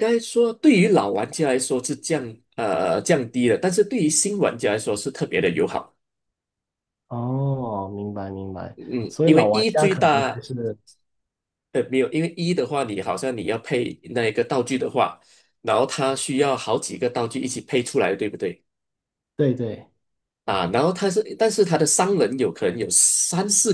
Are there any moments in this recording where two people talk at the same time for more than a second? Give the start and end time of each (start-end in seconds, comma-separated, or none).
8.8-10.4